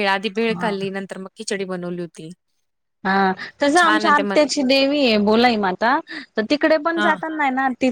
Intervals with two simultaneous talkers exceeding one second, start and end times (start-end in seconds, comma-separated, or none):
none